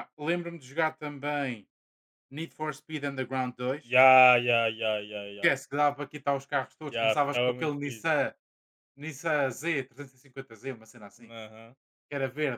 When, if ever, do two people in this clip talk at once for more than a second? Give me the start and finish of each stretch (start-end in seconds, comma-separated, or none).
6.8-8.1